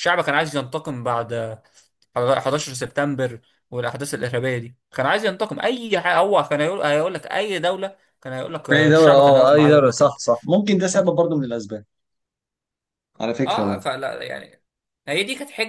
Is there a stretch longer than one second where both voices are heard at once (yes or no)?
yes